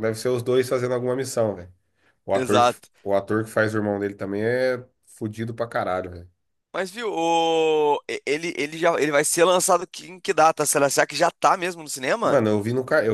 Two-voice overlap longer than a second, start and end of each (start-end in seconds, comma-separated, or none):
none